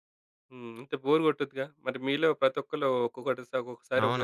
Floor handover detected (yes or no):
yes